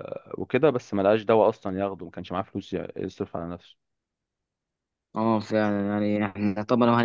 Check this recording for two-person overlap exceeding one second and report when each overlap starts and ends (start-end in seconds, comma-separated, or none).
none